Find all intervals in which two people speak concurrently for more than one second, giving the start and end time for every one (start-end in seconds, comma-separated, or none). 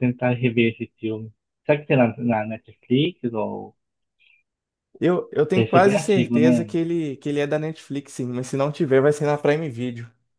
5.5-6.8